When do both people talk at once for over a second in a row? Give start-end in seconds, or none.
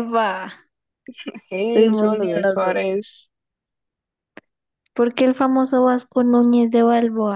1.7-2.9